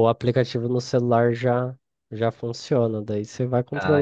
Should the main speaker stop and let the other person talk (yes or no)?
no